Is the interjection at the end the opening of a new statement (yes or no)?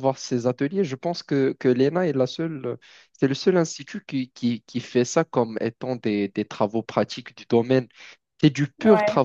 no